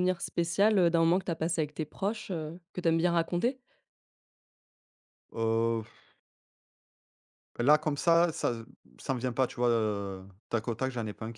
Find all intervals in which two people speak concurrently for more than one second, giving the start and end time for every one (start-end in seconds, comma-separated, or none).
none